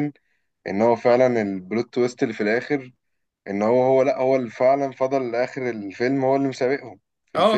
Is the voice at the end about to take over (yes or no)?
yes